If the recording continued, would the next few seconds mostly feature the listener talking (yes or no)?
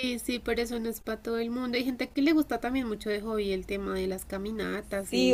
yes